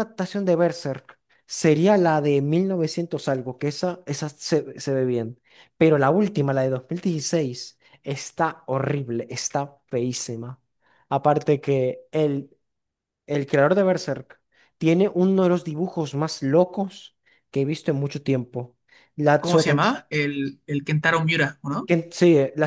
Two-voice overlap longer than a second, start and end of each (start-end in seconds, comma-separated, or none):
none